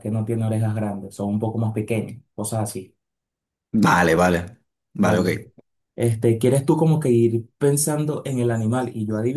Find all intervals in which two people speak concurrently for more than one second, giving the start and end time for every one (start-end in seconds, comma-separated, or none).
none